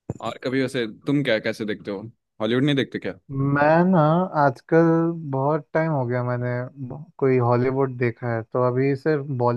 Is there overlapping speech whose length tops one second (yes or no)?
no